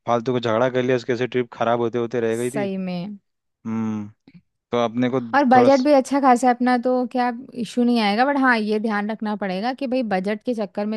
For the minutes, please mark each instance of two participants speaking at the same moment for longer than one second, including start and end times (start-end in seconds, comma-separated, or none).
none